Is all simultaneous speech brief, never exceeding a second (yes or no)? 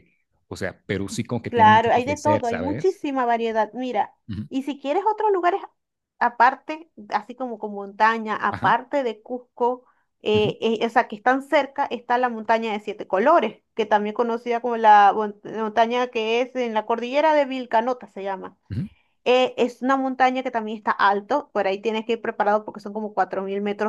no